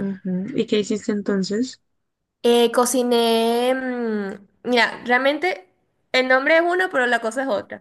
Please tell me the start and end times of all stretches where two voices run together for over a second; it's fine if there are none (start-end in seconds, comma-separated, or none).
none